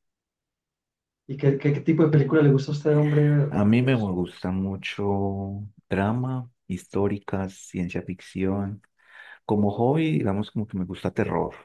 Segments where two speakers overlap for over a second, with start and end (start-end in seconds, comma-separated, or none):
none